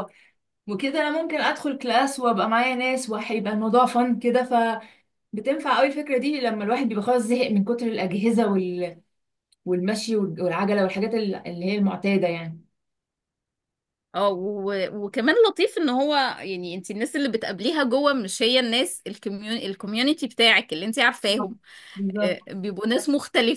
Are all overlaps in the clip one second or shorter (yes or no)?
yes